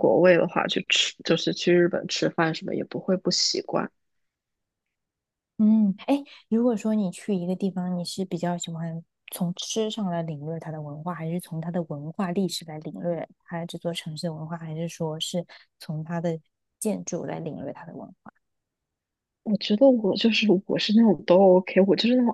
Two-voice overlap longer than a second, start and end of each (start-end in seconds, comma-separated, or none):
none